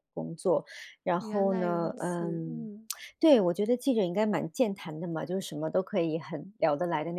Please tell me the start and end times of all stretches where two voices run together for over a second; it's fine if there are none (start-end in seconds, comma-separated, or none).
1.2-2.7